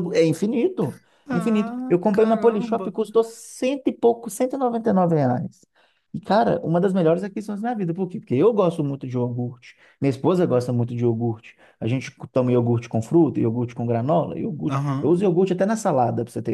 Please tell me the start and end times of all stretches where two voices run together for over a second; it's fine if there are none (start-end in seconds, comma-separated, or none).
1.3-2.9